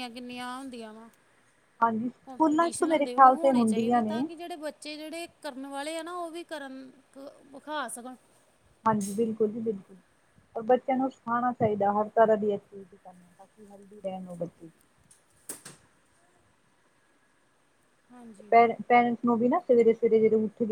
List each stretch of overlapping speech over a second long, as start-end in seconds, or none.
2.3-4.2